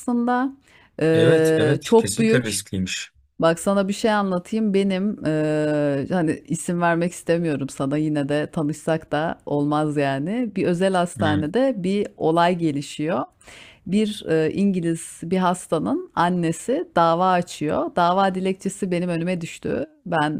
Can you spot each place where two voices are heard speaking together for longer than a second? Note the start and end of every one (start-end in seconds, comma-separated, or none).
1.1-2.6